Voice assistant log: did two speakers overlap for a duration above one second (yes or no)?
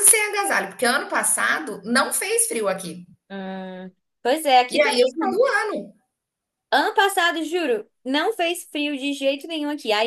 no